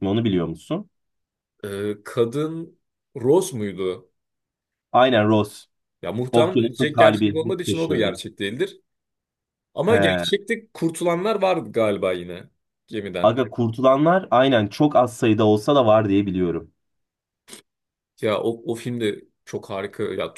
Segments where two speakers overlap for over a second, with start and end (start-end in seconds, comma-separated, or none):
6.3-8.2